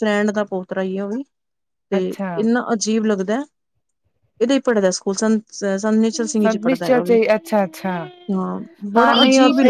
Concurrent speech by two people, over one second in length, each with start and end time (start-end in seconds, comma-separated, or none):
6.4-7.9